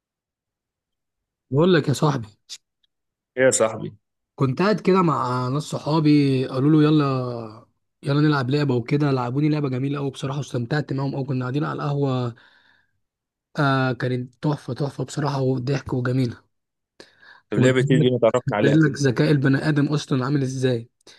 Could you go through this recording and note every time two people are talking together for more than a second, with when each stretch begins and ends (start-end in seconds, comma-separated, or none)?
17.6-19.0